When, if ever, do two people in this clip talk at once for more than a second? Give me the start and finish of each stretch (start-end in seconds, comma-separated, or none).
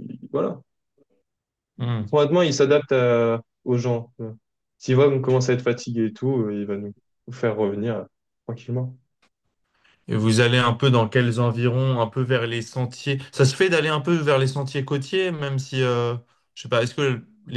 none